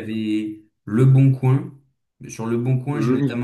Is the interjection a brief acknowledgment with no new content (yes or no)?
yes